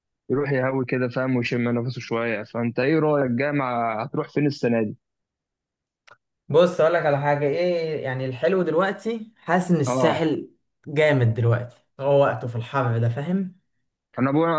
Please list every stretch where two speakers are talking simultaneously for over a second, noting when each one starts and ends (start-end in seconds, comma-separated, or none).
none